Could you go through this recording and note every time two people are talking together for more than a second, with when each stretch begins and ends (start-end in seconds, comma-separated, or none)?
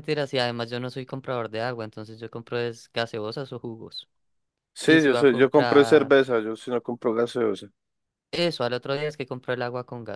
4.8-6.1